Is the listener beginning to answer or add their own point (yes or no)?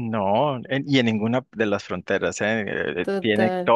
no